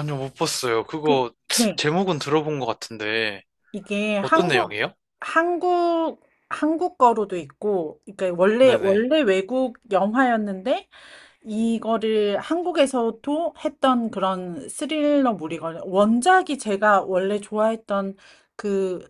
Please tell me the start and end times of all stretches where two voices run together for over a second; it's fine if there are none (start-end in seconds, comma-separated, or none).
none